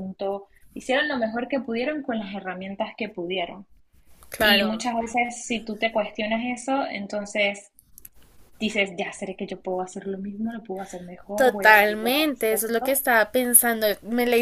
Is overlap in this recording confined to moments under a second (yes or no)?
no